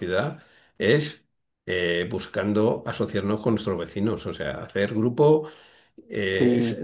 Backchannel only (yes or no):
yes